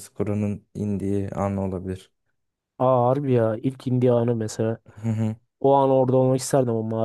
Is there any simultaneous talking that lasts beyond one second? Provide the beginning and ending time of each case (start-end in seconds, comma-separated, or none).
none